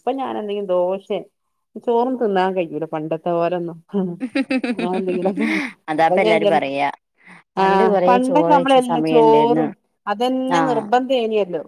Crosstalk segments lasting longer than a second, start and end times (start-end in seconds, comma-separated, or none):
7.6-9.7